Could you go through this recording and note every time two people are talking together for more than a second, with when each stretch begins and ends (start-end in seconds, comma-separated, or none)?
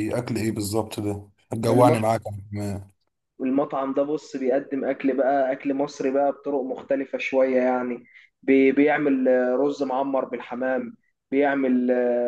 none